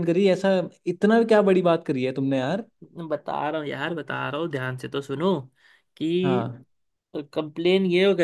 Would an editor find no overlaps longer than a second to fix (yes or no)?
yes